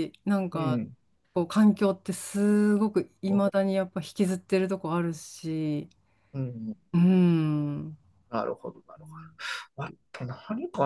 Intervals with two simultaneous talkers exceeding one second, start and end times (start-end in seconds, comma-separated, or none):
none